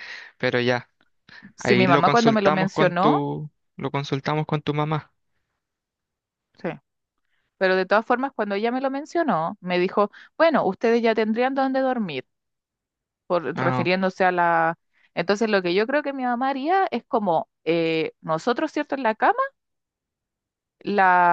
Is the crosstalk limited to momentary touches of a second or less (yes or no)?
no